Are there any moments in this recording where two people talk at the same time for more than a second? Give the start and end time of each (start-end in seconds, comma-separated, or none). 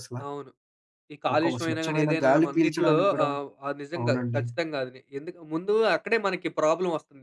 1.3-3.3